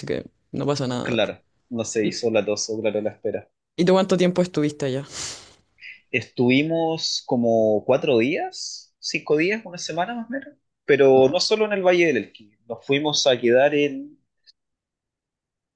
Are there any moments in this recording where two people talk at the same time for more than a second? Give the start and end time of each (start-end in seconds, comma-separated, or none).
none